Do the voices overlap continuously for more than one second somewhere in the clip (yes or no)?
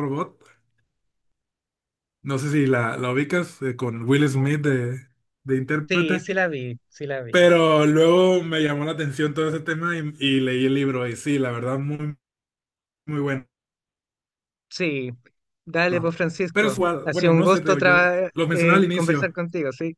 yes